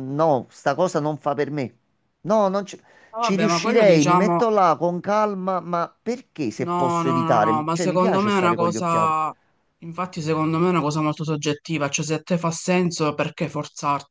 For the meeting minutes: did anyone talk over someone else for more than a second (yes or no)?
yes